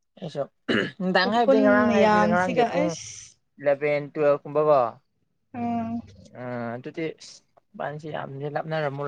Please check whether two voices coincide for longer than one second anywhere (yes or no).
yes